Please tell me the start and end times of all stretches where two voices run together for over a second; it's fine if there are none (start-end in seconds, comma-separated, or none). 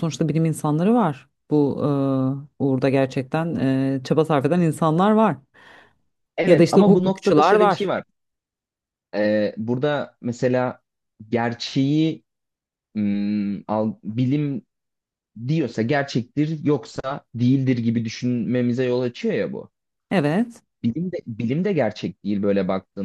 6.5-7.9